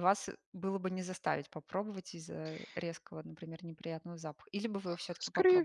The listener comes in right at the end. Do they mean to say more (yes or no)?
yes